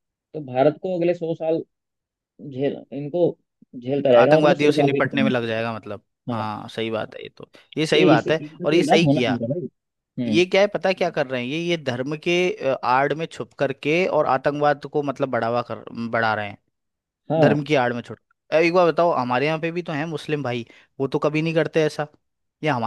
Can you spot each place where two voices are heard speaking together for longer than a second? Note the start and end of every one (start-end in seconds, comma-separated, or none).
4.2-5.7, 7.9-9.4